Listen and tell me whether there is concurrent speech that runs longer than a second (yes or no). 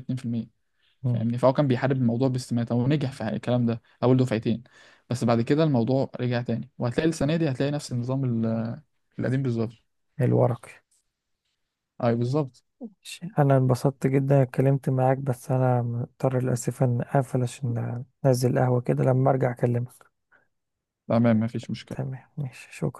no